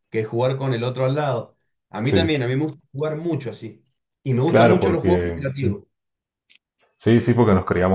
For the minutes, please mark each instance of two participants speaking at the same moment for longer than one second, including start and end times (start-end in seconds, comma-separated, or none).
4.5-5.7